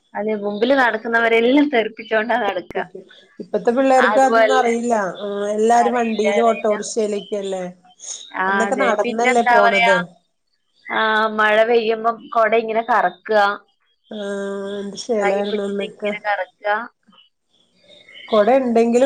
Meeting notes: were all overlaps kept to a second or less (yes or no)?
no